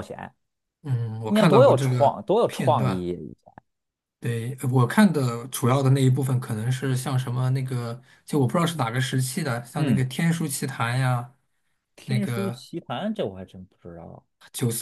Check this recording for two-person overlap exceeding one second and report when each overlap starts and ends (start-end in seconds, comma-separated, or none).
1.2-3.0